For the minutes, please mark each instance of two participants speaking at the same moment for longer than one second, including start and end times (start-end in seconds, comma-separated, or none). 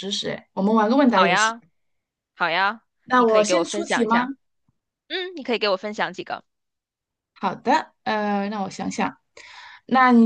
3.0-4.3